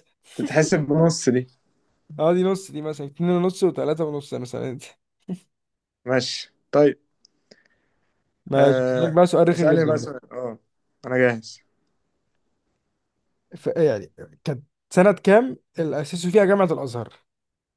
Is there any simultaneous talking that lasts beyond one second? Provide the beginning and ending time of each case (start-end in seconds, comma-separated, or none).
8.5-10.2